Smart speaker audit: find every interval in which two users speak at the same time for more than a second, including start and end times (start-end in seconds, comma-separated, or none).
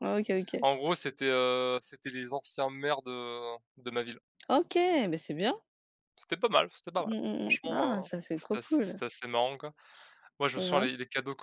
7.0-9.0